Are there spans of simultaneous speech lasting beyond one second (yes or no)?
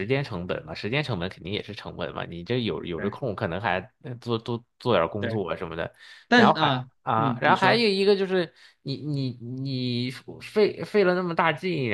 yes